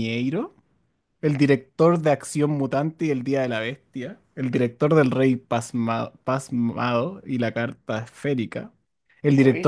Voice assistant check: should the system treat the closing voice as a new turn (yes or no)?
no